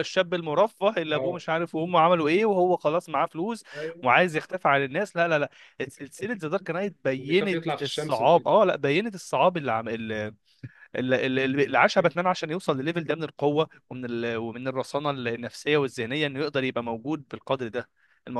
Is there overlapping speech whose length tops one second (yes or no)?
yes